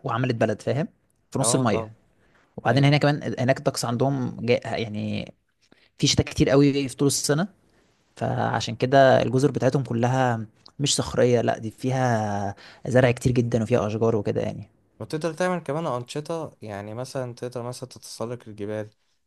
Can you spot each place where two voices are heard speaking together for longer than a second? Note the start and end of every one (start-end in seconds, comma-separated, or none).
none